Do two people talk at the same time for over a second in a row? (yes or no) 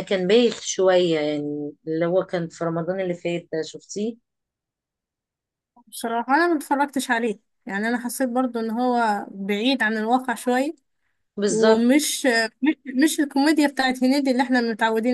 no